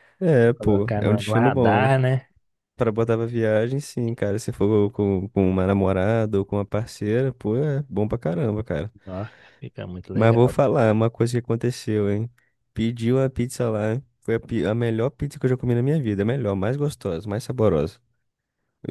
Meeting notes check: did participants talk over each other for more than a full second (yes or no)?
yes